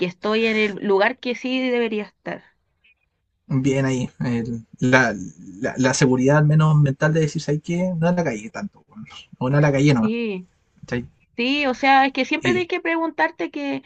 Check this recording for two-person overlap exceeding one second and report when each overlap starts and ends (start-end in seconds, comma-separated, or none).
none